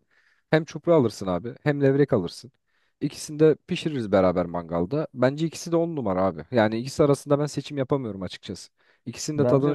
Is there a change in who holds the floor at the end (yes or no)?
no